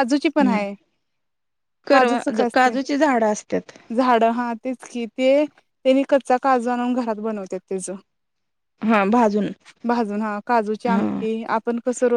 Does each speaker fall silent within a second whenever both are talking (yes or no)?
yes